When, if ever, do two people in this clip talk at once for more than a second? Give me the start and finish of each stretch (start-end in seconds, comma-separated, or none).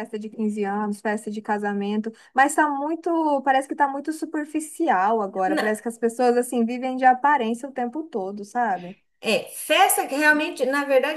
none